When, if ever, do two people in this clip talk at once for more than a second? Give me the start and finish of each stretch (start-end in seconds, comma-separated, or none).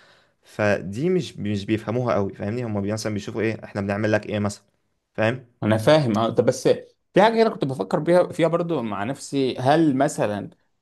none